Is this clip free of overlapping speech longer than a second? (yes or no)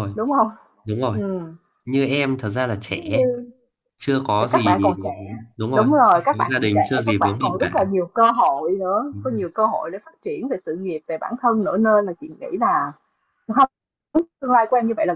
no